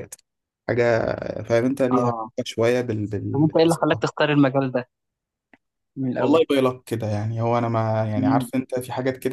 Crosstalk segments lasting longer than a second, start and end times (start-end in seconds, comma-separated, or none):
none